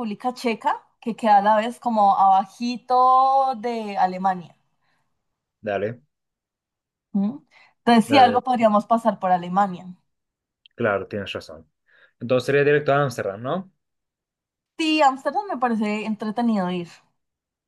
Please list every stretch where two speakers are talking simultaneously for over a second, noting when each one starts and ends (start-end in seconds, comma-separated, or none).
none